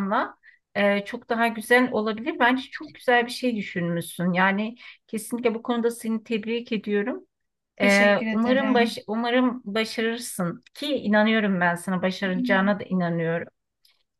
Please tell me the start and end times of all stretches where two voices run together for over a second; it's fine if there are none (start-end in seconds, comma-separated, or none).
7.8-9.0